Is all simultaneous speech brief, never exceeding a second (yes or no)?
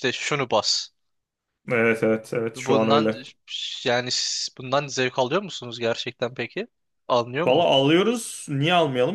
yes